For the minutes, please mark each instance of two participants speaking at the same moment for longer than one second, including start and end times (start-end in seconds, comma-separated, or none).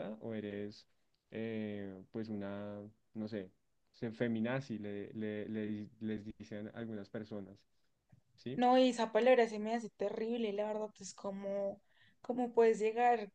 none